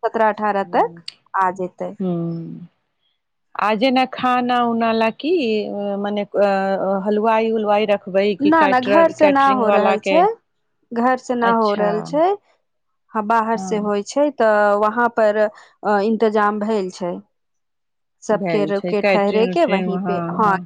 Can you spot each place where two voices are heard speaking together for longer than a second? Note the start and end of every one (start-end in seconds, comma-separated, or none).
18.4-19.9